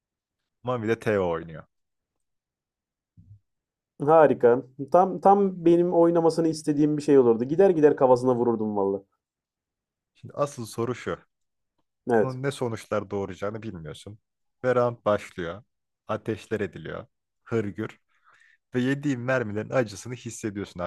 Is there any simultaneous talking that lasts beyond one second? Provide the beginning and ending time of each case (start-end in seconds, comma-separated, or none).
none